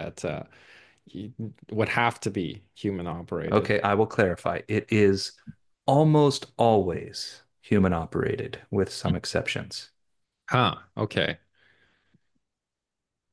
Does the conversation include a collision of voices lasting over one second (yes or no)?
no